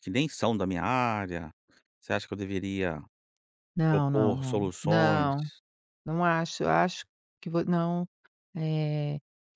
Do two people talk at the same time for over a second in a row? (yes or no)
yes